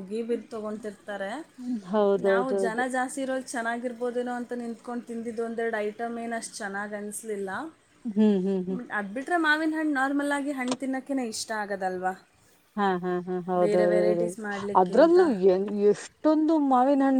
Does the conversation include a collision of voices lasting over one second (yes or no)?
no